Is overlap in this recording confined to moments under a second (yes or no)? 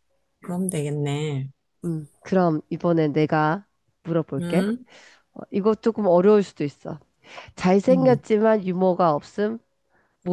yes